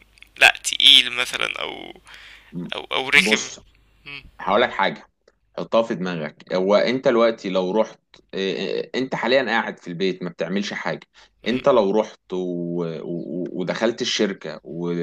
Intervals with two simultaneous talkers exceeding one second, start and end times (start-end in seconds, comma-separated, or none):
none